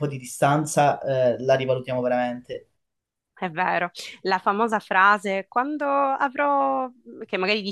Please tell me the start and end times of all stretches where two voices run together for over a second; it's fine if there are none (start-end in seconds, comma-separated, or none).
none